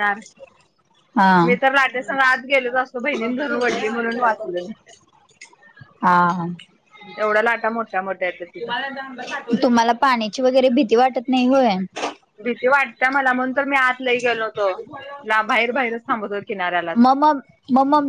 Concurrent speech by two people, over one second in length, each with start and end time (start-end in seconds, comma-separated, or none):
none